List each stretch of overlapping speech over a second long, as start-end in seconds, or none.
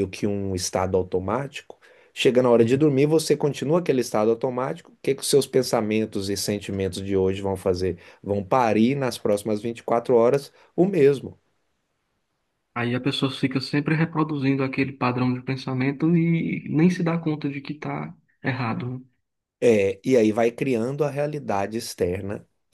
none